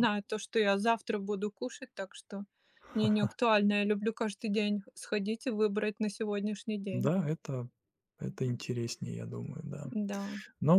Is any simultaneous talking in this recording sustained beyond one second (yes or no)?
no